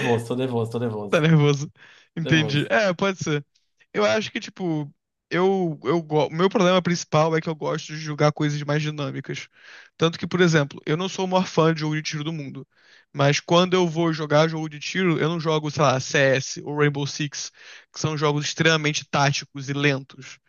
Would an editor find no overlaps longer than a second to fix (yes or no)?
yes